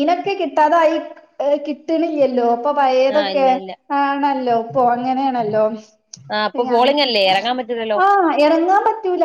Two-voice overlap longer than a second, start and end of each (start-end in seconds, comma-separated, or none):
none